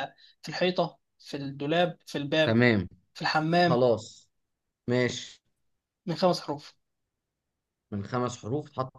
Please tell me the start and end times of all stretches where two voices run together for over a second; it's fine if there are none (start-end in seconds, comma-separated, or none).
none